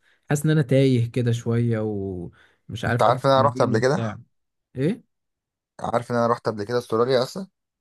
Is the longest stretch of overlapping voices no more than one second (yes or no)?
no